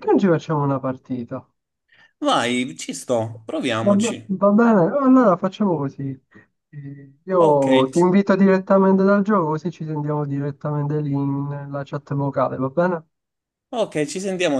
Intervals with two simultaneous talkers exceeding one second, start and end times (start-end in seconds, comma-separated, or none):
none